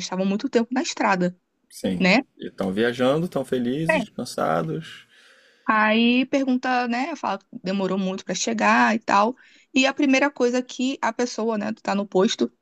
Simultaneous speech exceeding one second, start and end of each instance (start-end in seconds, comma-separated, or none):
none